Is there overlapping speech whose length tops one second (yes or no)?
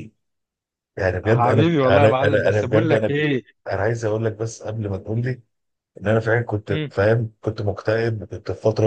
yes